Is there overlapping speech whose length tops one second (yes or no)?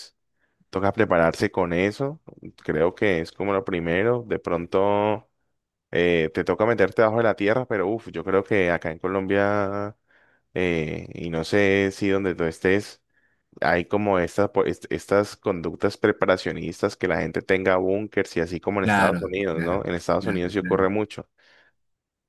yes